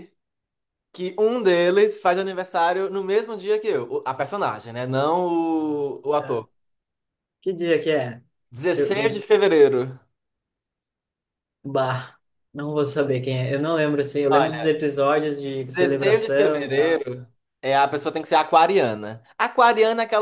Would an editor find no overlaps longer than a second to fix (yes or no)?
no